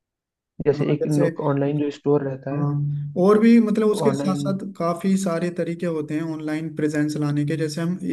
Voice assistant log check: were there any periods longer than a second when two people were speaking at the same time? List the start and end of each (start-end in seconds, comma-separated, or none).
none